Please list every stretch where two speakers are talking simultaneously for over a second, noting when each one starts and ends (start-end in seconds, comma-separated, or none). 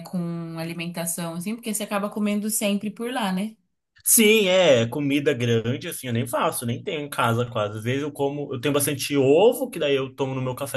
none